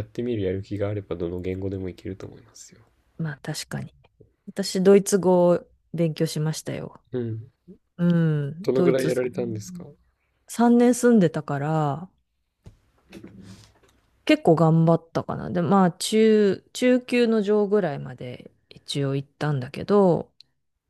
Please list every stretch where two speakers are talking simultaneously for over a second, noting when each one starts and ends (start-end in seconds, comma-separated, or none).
8.6-9.8